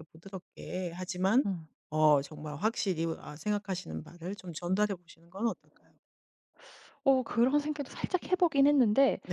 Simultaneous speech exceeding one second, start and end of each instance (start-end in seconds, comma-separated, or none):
none